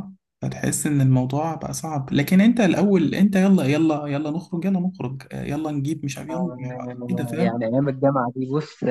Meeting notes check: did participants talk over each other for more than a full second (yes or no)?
yes